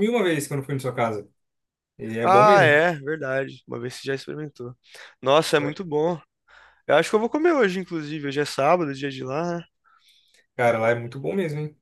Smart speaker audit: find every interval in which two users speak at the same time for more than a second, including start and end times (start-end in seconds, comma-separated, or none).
none